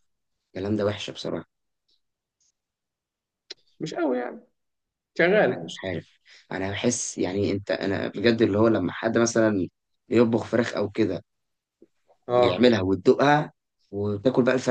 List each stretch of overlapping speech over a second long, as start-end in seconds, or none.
none